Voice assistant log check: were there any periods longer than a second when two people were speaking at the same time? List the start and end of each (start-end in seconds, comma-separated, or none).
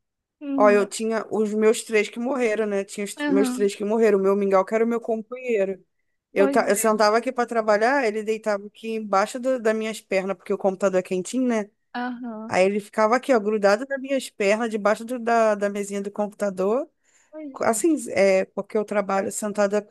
none